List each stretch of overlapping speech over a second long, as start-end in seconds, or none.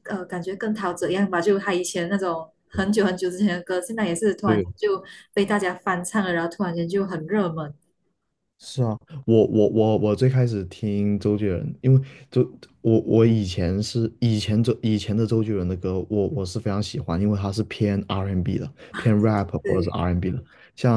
none